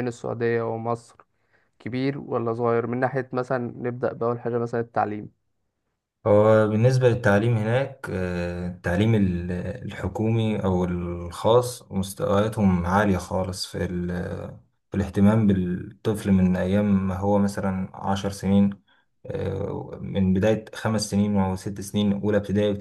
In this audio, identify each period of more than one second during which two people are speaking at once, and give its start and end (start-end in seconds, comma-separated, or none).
none